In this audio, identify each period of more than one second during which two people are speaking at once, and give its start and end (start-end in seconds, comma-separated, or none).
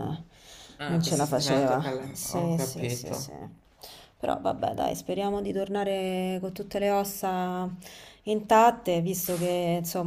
0.9-3.3